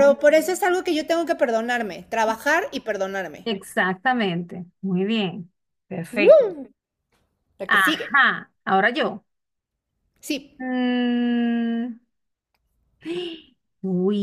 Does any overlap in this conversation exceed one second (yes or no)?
no